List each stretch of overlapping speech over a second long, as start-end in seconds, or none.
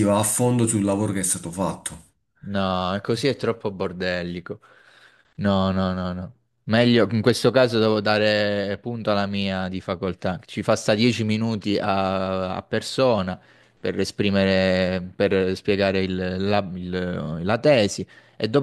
none